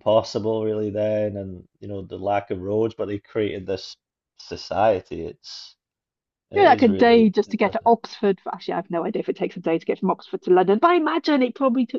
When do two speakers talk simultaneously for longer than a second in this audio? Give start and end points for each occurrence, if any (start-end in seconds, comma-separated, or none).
6.5-7.9